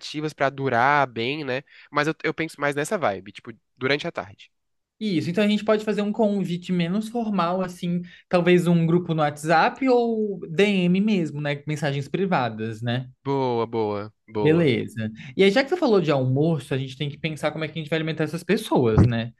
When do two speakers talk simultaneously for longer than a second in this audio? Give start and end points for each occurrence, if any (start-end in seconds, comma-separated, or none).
none